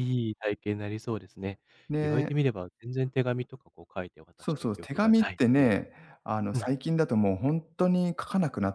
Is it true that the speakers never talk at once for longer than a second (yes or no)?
no